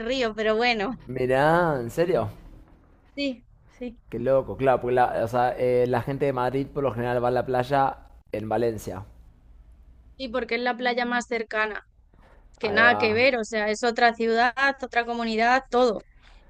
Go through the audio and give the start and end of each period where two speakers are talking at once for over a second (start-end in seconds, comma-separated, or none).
none